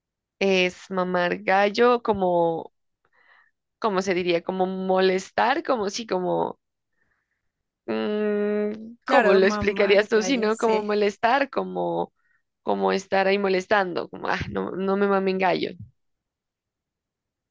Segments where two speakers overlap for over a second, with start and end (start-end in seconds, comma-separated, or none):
9.1-10.9